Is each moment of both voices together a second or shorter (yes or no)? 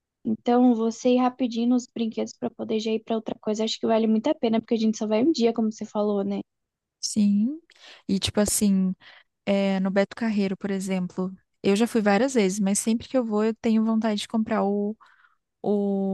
yes